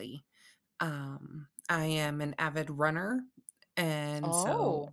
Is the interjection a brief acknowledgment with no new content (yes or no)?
yes